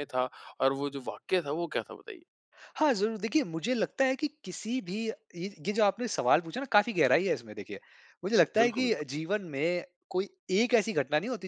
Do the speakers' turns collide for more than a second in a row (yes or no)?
no